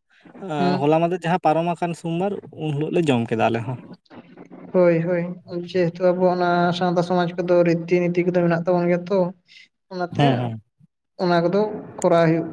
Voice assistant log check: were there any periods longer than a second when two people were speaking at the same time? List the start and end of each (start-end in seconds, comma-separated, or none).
none